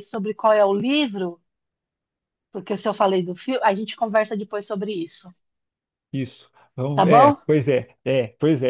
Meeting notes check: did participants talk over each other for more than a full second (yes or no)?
no